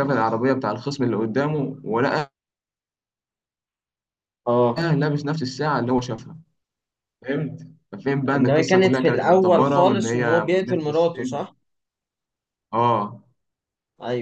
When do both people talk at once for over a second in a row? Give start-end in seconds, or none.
8.3-11.4